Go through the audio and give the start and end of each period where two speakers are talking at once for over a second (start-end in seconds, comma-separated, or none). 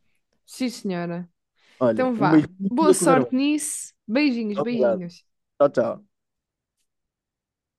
1.9-3.3